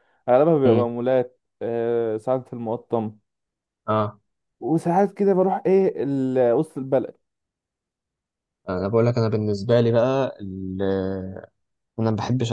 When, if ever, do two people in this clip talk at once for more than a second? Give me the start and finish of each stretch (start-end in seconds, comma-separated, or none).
none